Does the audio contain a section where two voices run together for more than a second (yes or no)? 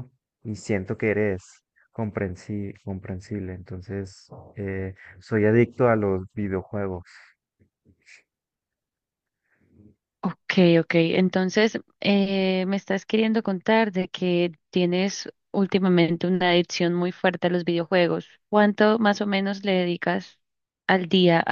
no